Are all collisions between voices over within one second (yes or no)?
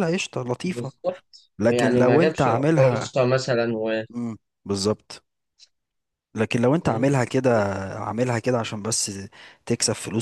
no